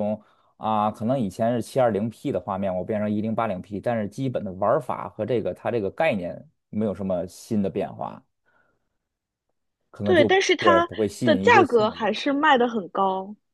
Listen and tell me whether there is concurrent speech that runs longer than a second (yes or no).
yes